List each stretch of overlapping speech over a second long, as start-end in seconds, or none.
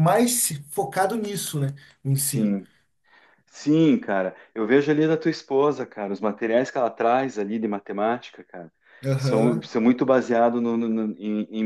none